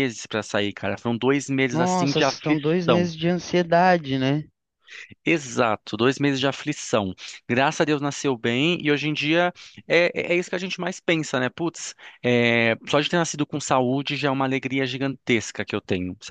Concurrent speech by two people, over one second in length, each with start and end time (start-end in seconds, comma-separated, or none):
1.7-3.1